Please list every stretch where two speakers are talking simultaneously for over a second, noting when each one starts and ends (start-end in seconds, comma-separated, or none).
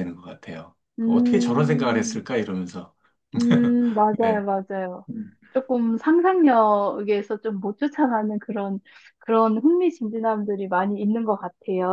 1.0-2.2